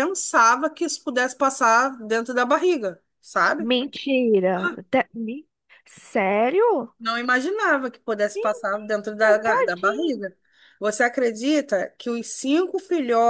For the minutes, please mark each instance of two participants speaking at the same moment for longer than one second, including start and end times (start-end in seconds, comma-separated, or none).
8.3-10.2